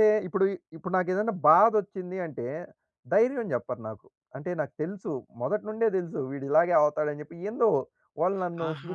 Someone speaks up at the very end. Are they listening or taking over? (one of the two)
taking over